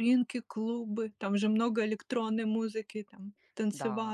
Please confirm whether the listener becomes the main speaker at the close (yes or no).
yes